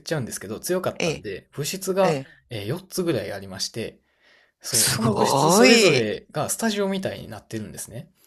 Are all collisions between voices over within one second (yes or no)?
no